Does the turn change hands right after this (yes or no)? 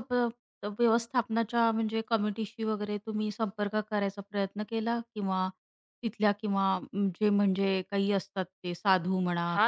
yes